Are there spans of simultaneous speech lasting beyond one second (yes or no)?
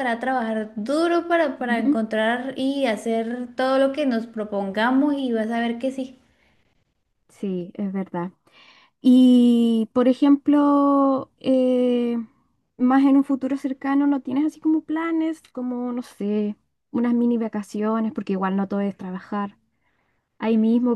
no